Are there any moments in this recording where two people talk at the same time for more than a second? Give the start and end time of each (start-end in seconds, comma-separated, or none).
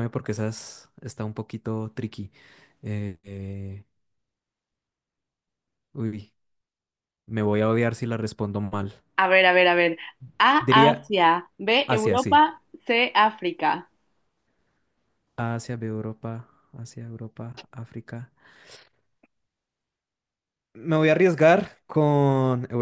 none